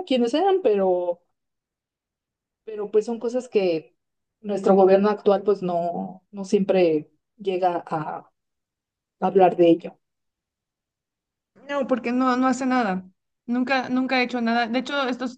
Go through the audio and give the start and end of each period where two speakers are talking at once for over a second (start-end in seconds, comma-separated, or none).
none